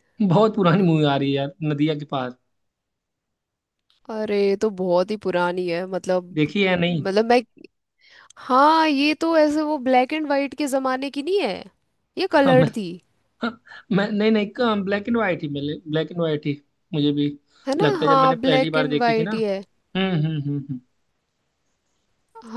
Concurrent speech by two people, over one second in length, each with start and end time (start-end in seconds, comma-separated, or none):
17.8-19.3